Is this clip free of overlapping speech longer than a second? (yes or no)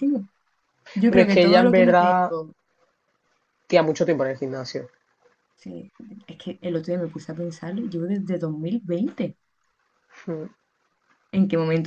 no